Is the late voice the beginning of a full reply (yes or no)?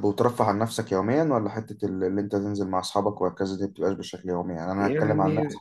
no